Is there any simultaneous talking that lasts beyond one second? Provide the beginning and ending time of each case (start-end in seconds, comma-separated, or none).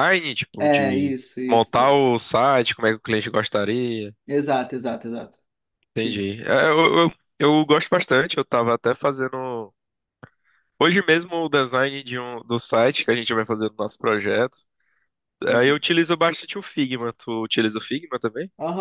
0.6-2.0